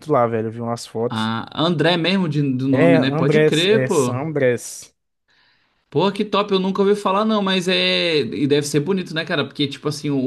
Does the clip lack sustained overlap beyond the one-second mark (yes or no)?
no